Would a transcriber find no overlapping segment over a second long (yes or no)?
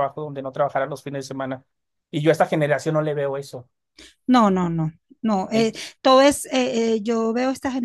yes